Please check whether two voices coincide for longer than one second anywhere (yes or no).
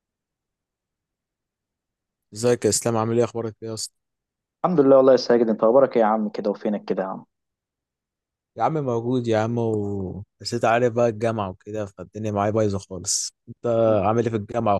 no